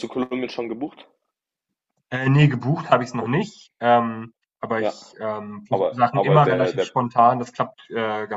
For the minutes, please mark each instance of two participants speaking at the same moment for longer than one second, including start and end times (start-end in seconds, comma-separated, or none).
5.7-6.9